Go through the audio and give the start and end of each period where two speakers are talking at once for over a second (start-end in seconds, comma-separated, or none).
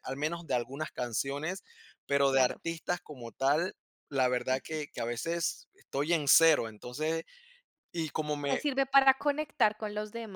none